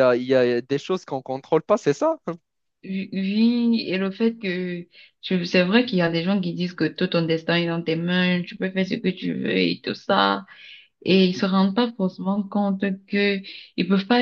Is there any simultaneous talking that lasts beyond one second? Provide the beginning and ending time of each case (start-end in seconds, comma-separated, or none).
none